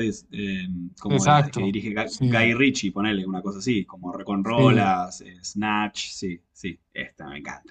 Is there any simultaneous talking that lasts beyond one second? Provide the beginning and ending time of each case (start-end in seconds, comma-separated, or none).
1.1-2.5